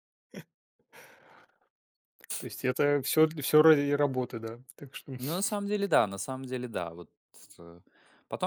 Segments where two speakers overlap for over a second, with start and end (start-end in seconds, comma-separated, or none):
none